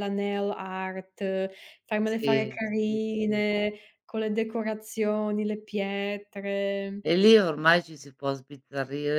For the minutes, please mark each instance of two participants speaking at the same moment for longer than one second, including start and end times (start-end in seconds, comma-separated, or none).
2.0-3.4